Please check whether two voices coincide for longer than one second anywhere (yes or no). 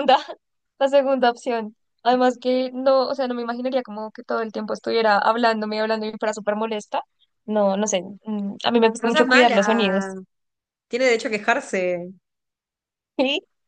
yes